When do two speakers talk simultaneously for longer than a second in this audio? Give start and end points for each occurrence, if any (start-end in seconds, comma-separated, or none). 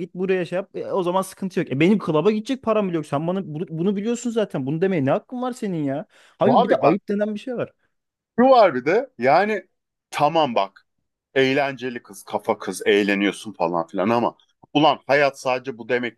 none